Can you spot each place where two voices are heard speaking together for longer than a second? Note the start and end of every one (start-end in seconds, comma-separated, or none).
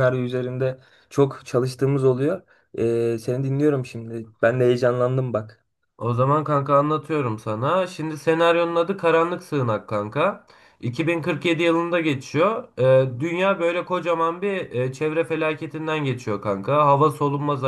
none